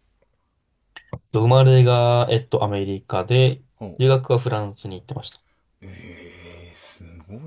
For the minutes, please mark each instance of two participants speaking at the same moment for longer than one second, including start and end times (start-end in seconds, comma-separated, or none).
none